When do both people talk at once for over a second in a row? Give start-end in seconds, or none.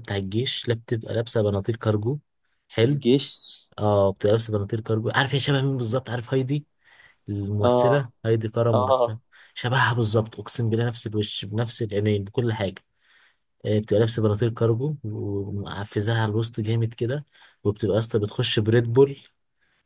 none